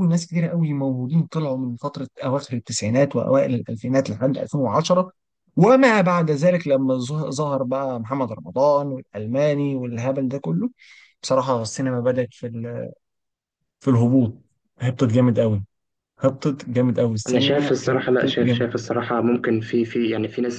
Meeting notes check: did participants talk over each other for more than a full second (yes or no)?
yes